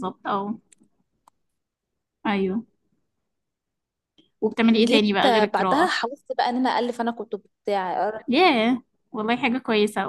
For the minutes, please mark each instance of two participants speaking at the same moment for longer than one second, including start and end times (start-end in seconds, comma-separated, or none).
4.7-5.9